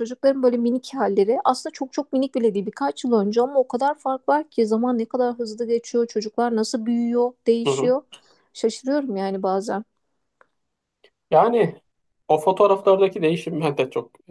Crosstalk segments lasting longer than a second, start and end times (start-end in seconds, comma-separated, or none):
none